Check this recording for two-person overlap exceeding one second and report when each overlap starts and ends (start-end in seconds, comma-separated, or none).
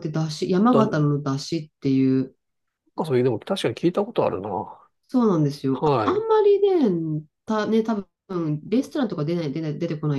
none